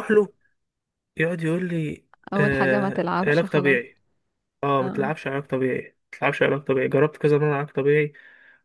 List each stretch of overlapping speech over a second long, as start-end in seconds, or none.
2.3-3.8